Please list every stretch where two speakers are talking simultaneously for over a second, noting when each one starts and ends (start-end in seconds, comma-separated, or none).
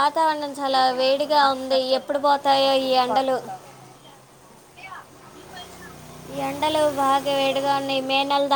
1.4-3.4